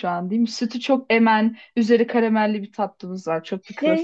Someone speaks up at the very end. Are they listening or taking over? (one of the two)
taking over